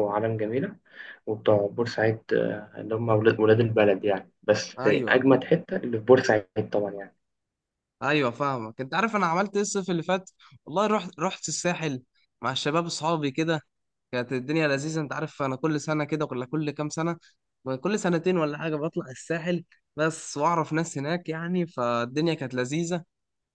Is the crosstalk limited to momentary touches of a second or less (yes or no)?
yes